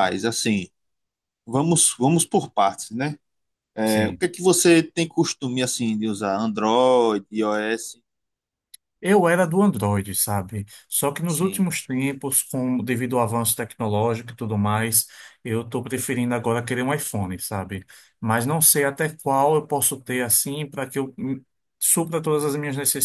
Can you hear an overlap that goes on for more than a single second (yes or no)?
no